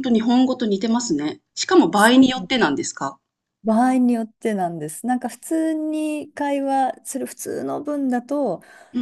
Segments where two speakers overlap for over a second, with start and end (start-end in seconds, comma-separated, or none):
none